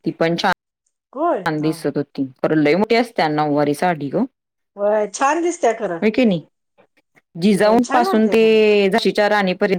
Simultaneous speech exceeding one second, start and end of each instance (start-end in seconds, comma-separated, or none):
none